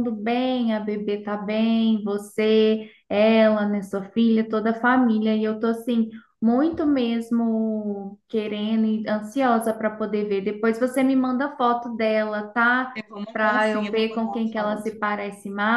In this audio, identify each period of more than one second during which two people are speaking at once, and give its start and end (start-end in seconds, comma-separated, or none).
13.3-14.9